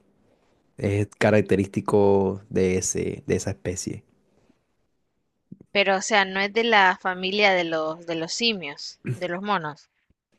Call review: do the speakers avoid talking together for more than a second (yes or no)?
yes